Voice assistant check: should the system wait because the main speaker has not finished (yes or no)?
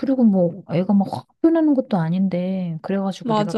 yes